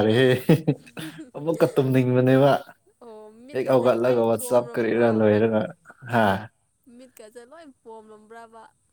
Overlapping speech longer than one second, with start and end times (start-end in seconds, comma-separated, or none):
3.5-5.1